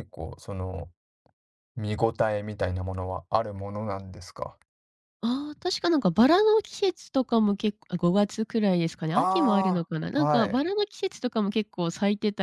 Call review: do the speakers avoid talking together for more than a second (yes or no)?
no